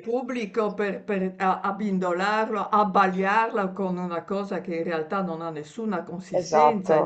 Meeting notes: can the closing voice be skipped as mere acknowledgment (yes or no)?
yes